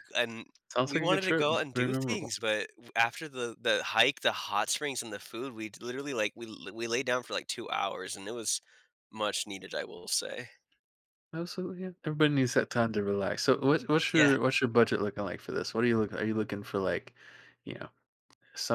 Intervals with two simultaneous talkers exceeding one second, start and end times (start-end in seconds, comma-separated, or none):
0.8-2.3